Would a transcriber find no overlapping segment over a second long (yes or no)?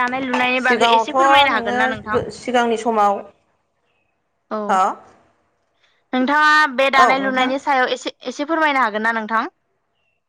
no